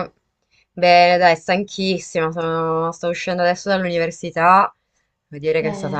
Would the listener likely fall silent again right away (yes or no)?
yes